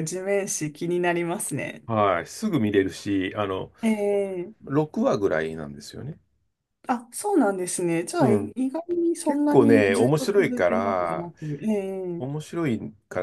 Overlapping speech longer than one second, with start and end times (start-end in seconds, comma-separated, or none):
9.2-11.3